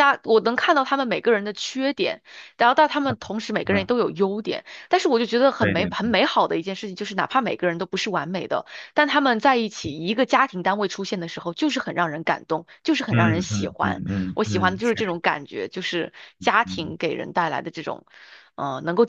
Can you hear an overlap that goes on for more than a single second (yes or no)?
yes